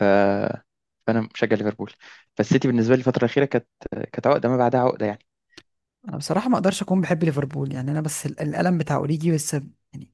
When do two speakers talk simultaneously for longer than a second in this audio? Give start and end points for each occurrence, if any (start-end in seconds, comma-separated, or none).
none